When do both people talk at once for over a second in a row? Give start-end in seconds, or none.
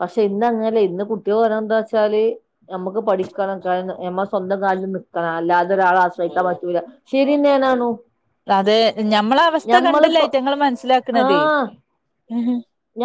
none